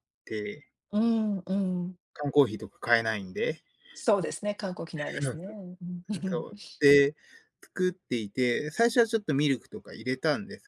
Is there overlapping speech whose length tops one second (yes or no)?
no